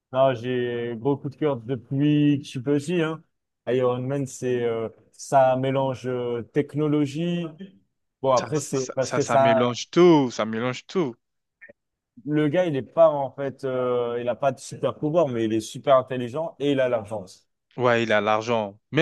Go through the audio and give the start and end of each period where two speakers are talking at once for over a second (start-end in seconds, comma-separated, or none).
8.3-9.8